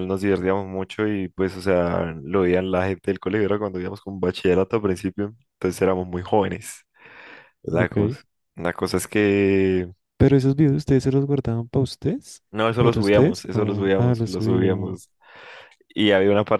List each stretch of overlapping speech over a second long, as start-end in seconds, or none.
12.5-15.0